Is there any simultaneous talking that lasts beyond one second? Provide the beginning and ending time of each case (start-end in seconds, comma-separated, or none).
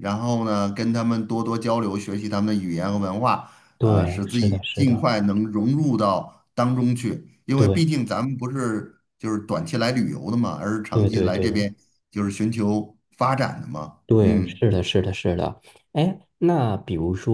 3.8-5.1